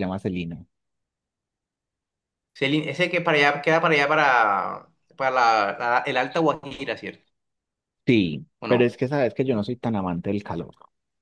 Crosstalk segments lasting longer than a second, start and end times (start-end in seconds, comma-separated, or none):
none